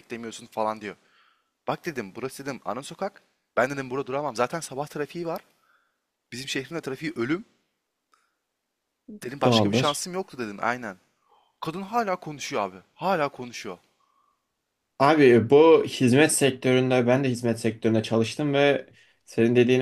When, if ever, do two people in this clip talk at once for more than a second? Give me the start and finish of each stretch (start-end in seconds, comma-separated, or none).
none